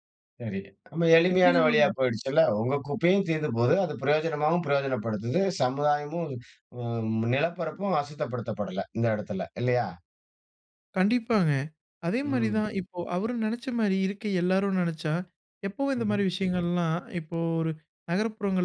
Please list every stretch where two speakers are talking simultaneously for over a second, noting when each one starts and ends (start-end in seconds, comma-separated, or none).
none